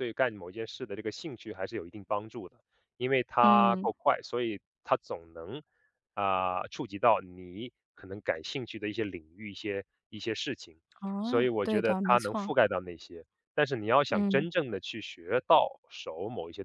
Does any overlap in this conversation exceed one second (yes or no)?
yes